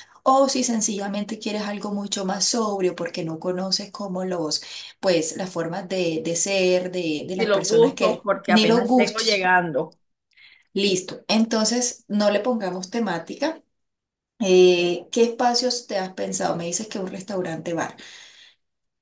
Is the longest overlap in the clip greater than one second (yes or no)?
yes